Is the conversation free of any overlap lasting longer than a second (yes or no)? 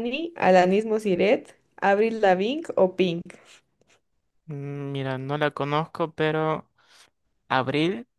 yes